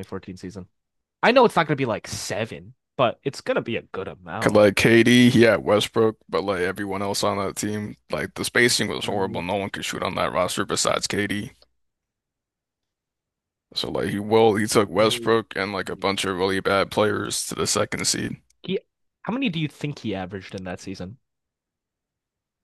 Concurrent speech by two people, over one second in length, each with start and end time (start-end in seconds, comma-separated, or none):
none